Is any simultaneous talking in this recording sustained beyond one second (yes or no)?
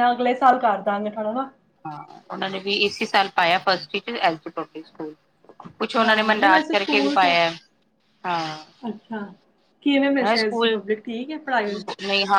yes